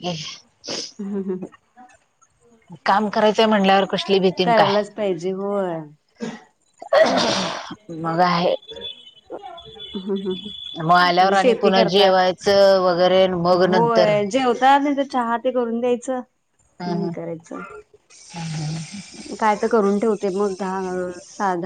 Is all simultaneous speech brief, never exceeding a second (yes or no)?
no